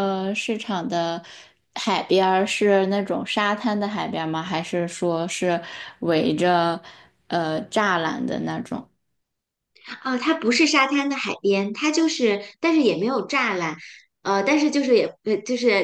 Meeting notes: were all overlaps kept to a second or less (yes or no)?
yes